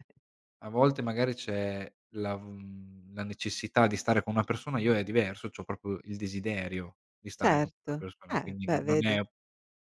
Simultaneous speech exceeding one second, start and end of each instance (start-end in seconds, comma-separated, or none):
7.4-9.2